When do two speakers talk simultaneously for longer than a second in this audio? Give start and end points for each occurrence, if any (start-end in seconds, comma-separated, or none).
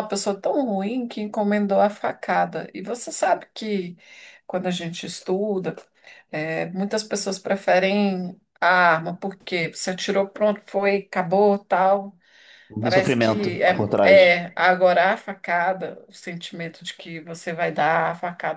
12.8-14.3